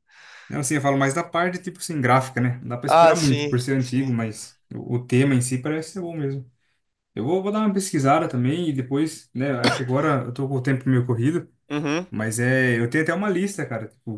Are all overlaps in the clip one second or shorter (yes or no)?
no